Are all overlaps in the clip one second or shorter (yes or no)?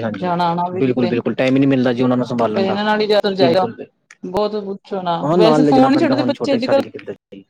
no